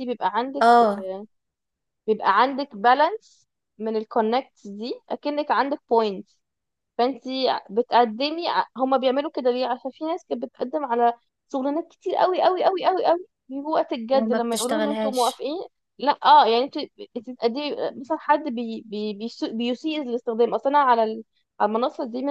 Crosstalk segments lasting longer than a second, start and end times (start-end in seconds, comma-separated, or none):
14.1-15.4